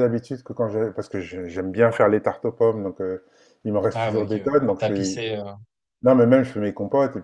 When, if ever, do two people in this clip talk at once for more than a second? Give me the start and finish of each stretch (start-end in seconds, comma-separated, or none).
3.9-5.2